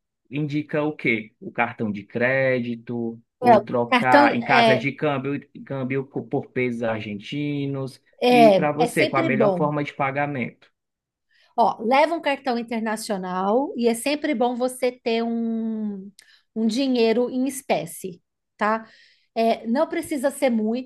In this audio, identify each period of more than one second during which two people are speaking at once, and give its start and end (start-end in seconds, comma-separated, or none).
3.4-4.9, 8.2-9.7